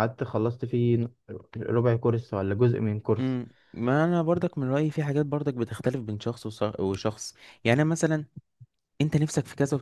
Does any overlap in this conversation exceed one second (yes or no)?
no